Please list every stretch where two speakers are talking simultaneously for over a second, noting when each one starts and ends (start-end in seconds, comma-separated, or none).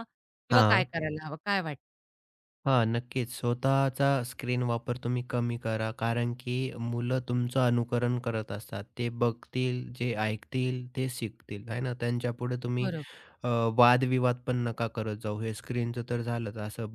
none